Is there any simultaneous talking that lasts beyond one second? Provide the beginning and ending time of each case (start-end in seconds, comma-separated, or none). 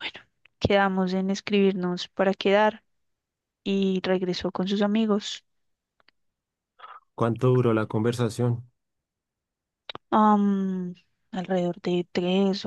none